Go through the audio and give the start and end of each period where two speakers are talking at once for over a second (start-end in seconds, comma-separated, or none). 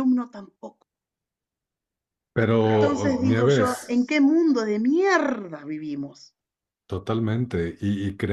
2.7-3.9